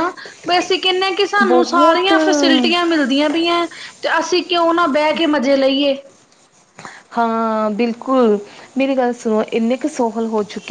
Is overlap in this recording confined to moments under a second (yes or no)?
no